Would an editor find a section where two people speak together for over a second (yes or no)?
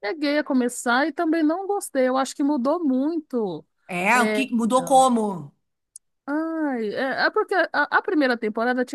no